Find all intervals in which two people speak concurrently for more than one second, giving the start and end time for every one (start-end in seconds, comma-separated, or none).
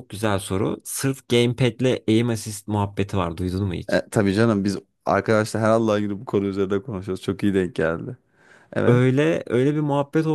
none